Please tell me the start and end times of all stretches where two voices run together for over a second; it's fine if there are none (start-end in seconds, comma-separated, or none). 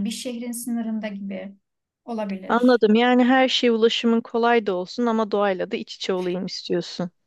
none